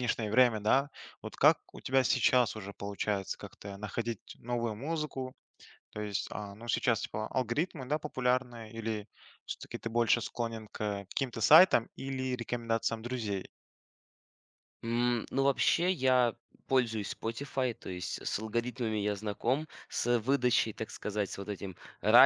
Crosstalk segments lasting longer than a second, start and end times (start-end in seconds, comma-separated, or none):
none